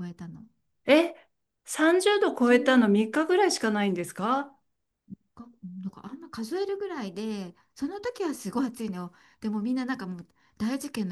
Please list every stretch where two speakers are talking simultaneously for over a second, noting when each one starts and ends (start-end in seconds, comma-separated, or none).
none